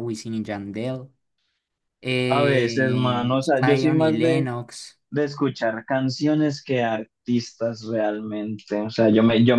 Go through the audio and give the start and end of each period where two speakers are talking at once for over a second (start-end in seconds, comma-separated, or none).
2.3-4.5